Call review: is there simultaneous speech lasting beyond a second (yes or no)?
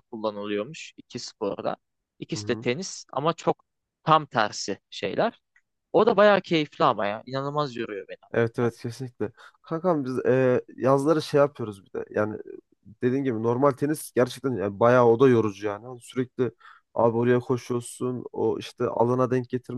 no